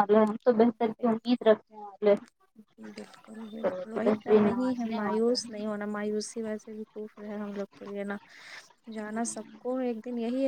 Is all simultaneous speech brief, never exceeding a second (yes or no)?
no